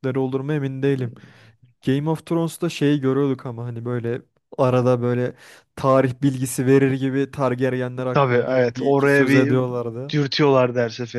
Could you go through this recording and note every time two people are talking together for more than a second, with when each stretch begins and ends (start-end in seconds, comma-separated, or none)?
8.1-9.6